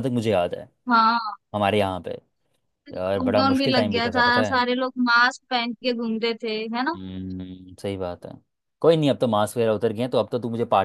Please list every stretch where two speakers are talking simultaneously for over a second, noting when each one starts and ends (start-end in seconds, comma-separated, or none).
3.2-4.6